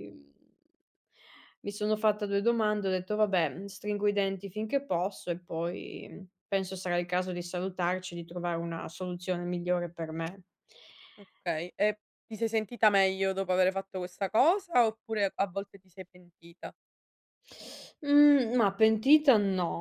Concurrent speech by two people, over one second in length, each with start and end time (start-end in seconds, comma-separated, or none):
none